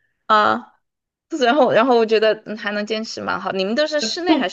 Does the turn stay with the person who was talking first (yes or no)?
no